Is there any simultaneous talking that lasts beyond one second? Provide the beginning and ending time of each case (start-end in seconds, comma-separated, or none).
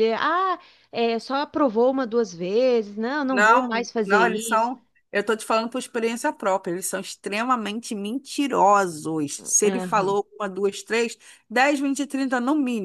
3.3-4.7